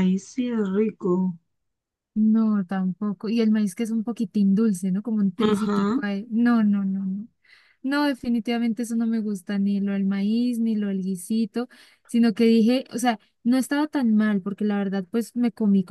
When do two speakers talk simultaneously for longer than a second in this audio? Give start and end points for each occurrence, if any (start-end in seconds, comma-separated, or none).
none